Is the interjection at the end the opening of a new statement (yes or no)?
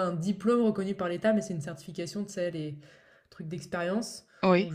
no